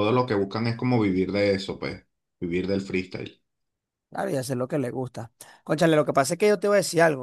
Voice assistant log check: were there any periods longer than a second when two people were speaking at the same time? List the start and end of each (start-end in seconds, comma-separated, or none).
none